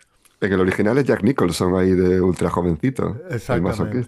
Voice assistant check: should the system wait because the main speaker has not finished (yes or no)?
no